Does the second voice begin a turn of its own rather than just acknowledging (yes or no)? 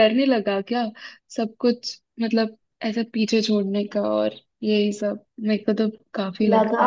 yes